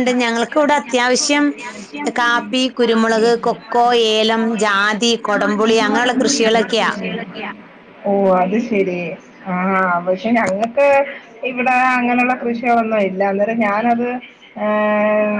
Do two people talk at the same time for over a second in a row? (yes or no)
no